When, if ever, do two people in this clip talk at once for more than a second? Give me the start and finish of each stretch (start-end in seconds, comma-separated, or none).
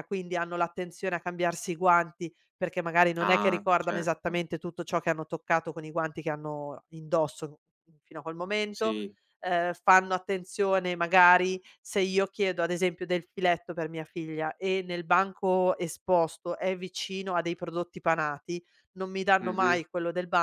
3.2-4.4